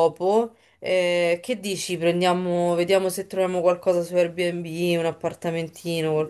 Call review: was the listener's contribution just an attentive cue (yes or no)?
no